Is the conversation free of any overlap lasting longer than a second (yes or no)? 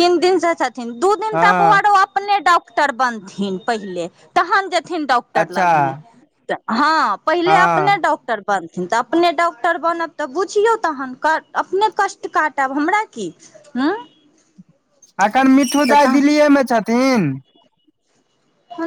yes